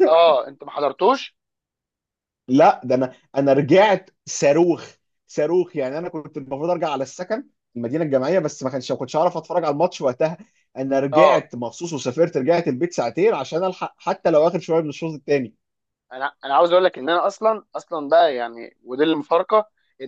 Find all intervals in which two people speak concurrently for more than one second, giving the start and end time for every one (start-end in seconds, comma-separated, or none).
none